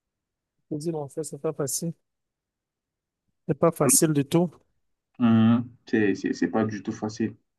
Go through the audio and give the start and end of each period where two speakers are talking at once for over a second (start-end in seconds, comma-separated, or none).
none